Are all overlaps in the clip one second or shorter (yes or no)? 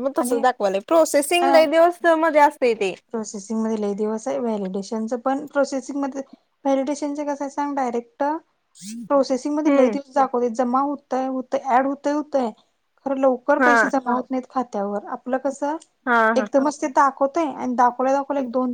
yes